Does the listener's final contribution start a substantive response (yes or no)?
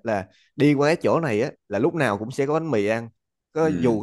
no